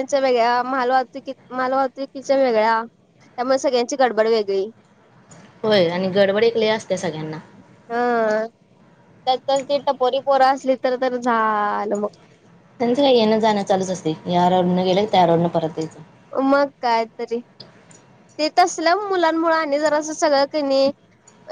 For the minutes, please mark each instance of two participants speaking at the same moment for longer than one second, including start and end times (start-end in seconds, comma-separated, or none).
none